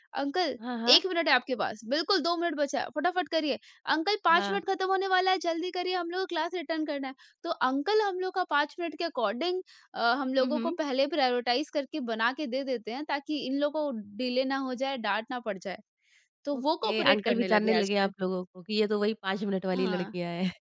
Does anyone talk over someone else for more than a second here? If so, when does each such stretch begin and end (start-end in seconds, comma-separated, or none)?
16.6-18.1